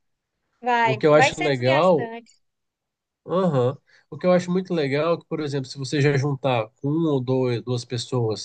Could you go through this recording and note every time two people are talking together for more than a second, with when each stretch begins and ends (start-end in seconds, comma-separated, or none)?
0.8-2.1